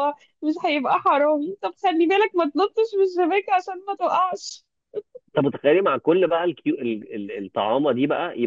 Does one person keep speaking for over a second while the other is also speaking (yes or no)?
no